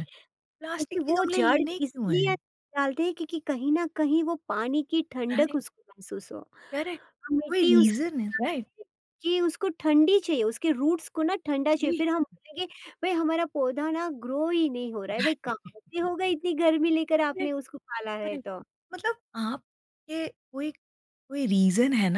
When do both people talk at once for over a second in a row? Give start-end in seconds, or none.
0.6-2.3